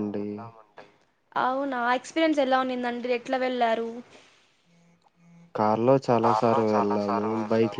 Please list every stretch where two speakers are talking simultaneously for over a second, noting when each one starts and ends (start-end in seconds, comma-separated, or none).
none